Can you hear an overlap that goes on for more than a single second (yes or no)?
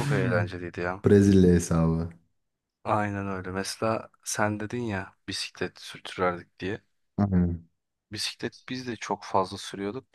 no